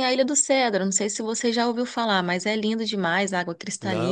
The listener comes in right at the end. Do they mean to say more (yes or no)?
yes